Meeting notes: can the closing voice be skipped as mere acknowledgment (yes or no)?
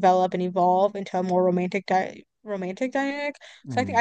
yes